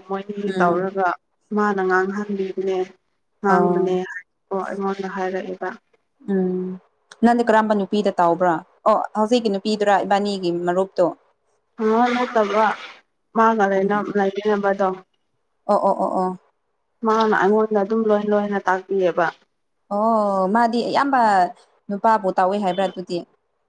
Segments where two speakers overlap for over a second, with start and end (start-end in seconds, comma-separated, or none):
none